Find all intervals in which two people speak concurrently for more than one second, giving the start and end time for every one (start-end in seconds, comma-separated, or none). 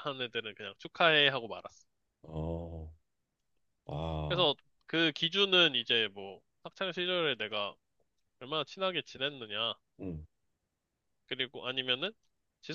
none